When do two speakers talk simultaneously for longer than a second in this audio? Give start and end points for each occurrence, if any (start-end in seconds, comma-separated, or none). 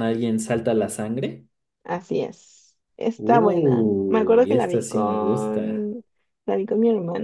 3.2-5.9